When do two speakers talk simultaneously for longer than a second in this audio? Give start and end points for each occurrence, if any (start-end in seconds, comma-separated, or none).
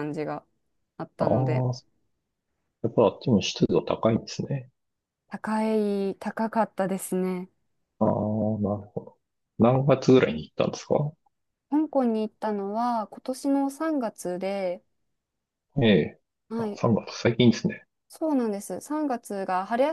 none